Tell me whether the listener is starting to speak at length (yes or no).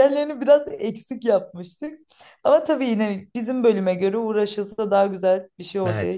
yes